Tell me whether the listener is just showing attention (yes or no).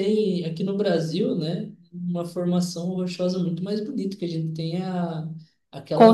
yes